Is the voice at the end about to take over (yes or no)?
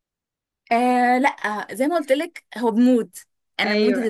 no